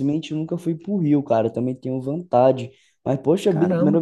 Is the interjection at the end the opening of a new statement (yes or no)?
no